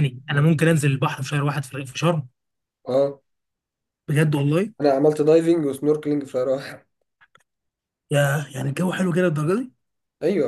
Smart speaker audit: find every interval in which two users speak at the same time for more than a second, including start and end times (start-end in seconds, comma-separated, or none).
none